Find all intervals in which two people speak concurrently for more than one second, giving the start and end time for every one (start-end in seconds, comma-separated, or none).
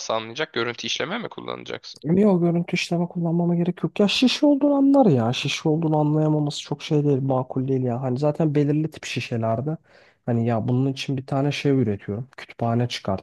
none